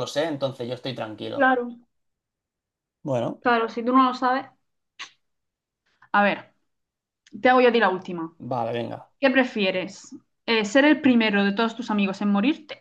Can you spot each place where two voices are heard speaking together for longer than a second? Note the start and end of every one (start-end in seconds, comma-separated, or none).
none